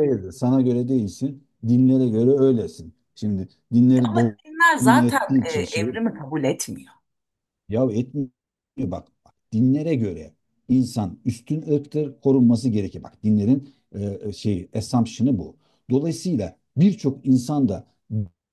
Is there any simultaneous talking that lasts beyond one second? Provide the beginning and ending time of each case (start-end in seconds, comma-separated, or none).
4.0-5.9